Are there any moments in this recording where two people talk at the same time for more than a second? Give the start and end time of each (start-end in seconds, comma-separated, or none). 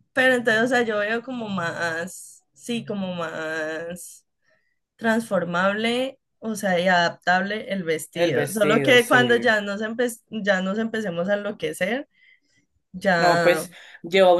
8.1-9.6